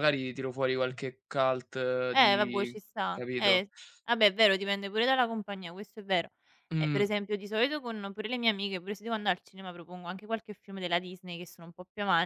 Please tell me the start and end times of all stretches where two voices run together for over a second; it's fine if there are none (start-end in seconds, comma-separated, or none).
2.1-3.6